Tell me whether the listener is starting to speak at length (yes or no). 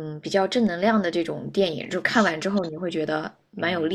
yes